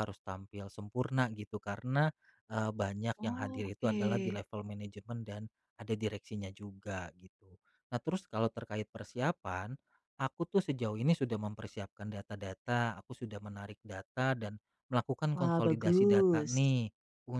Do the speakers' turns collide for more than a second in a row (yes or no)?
yes